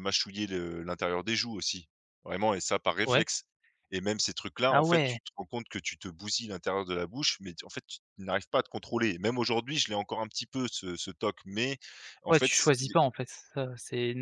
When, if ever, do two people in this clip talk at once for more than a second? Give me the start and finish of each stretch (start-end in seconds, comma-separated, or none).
none